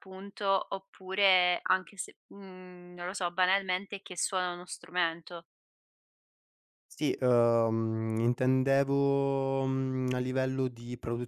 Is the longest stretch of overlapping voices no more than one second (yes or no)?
yes